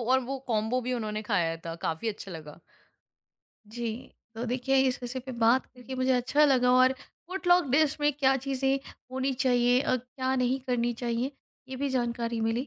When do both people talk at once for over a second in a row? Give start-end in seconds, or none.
none